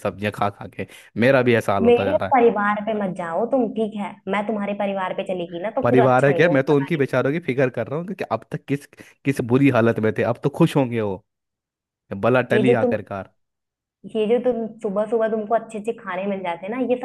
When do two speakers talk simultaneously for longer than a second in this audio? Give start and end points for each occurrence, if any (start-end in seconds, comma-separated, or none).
5.8-7.1